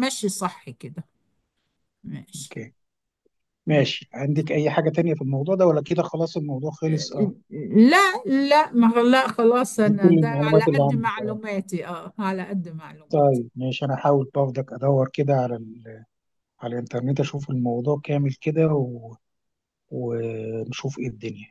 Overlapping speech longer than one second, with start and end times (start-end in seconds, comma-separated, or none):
9.8-11.4